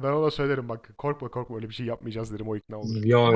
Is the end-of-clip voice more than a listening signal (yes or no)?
yes